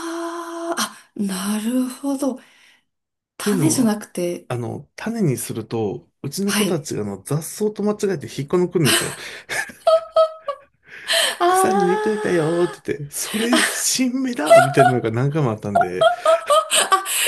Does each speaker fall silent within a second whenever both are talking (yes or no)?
no